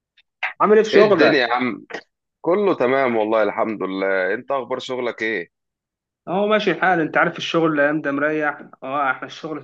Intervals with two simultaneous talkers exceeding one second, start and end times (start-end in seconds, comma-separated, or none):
none